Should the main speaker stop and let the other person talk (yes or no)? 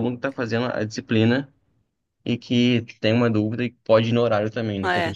yes